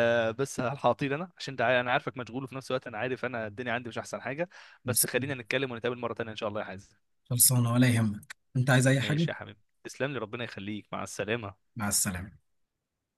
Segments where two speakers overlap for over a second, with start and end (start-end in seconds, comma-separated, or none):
none